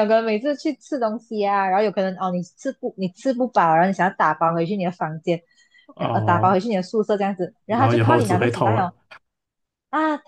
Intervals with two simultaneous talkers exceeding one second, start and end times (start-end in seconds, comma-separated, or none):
7.7-8.9